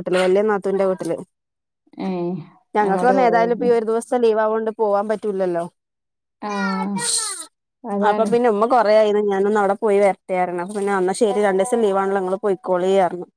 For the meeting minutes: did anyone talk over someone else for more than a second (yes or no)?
no